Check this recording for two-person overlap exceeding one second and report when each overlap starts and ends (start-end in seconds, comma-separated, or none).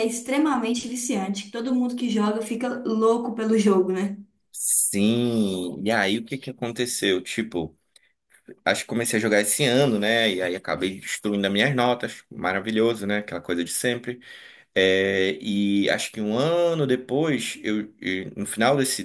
none